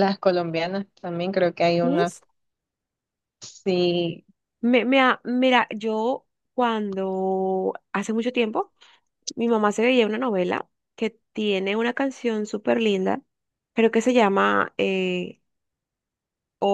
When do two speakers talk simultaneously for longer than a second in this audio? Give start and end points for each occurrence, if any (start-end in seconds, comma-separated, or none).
none